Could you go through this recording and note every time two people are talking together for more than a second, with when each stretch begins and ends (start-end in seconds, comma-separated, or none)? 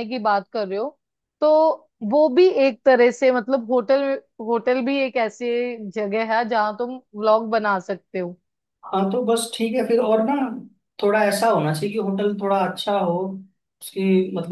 none